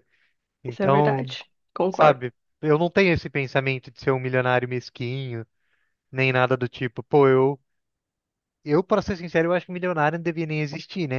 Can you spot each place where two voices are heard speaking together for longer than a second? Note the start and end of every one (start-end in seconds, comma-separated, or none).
none